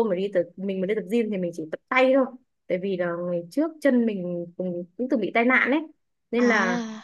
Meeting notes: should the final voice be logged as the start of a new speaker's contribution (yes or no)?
no